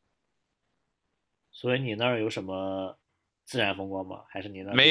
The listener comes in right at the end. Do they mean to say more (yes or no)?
yes